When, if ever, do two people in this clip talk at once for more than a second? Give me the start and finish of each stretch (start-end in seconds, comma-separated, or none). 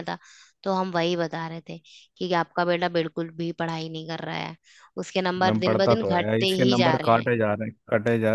5.4-7.3